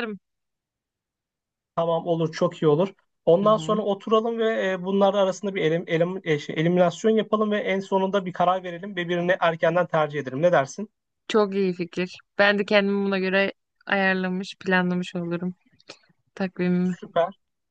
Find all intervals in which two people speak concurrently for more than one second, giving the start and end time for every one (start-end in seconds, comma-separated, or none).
none